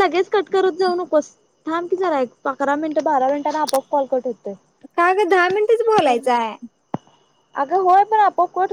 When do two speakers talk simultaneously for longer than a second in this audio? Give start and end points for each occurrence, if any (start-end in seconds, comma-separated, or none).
none